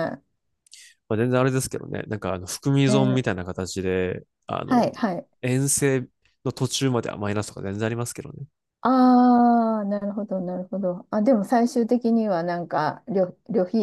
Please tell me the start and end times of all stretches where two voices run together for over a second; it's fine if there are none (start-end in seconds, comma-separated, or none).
none